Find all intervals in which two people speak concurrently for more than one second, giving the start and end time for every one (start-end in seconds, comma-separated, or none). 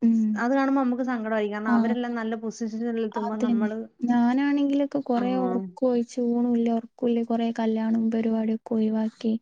none